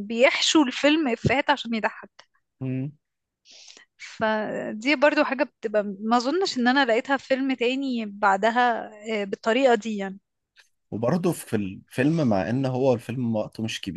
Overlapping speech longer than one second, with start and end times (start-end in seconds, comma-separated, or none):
none